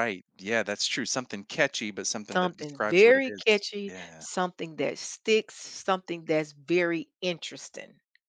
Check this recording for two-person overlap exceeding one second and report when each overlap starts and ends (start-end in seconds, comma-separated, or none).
2.3-4.2